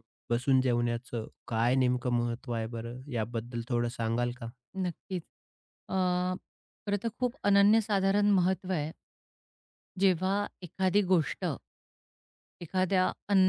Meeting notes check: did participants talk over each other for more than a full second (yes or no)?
no